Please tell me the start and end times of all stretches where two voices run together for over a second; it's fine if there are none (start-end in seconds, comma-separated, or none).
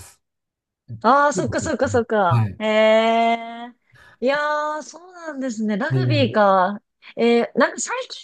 1.0-2.6